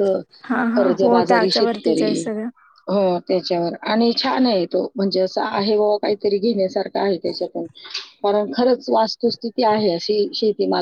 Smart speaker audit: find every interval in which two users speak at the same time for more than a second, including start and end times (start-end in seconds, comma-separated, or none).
0.7-2.3